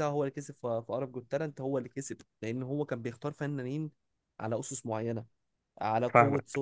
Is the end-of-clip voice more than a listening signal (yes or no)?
no